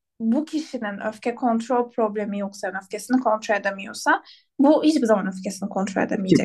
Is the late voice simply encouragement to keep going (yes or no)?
no